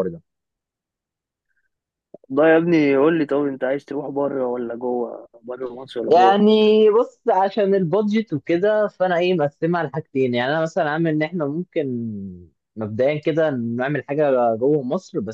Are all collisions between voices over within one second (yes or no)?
yes